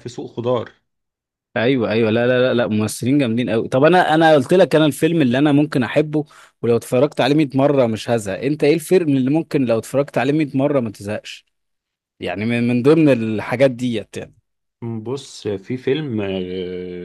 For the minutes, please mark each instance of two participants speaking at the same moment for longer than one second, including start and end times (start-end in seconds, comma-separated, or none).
none